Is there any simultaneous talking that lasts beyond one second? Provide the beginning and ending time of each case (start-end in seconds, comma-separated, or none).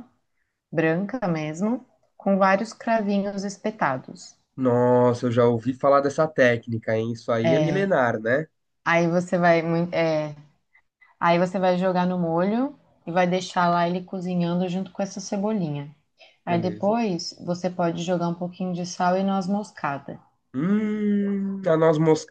none